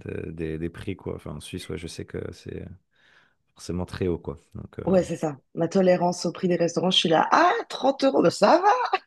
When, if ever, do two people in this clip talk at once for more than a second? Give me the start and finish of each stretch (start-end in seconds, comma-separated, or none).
none